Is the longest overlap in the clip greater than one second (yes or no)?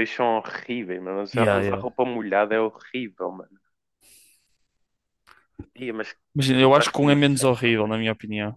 yes